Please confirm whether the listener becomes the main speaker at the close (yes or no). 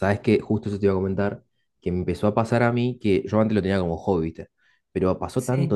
no